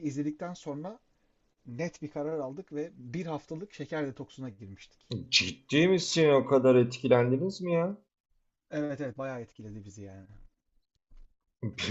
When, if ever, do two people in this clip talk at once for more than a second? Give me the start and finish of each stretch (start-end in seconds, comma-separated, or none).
none